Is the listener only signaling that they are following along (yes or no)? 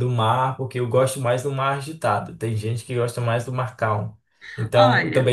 yes